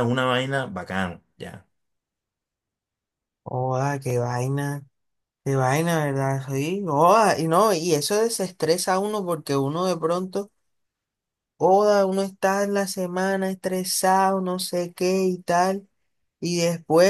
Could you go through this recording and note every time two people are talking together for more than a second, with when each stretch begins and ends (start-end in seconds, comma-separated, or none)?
none